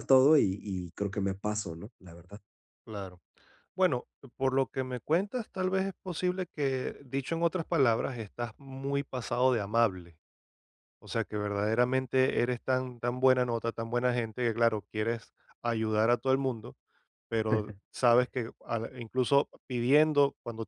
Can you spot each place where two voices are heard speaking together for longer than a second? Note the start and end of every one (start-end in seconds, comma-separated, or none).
none